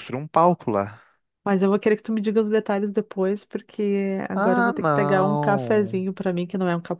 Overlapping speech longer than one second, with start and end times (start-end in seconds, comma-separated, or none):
4.3-6.0